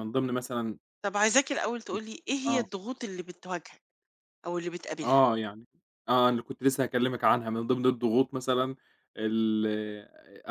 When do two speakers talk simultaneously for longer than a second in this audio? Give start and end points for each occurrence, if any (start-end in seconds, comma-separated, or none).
none